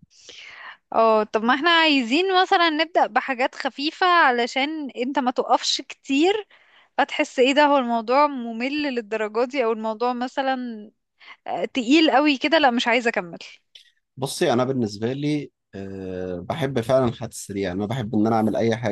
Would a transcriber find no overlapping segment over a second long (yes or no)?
yes